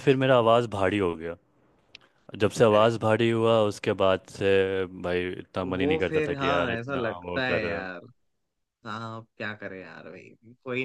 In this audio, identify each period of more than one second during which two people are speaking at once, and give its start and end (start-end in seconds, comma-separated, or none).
5.8-7.7